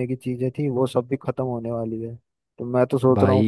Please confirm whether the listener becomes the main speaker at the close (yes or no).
no